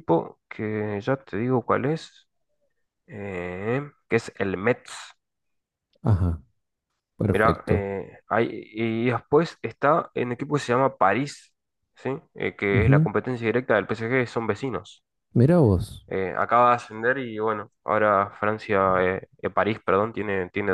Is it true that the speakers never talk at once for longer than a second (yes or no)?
yes